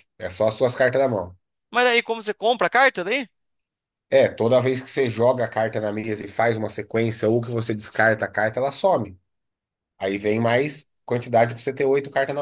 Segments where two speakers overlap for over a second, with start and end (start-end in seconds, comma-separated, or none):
none